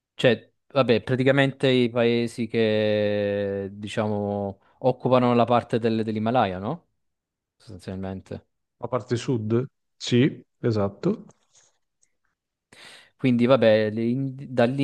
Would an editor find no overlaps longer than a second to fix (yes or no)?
yes